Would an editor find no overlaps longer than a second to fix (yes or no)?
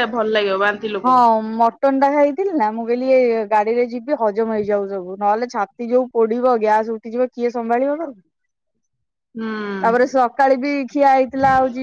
yes